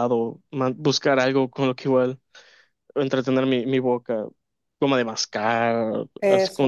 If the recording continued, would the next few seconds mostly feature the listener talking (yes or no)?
no